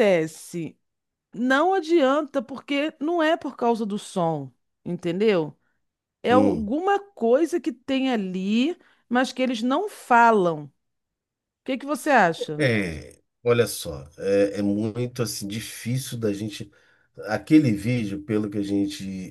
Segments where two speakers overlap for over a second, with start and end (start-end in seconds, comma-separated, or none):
none